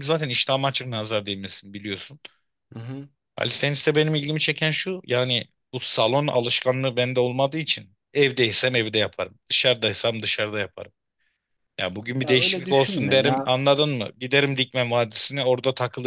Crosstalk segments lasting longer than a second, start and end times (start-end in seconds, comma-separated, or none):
12.2-13.5